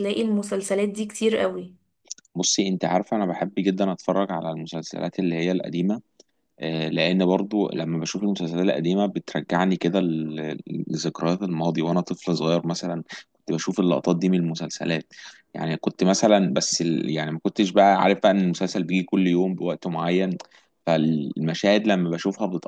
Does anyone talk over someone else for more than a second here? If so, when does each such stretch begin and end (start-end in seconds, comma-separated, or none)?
none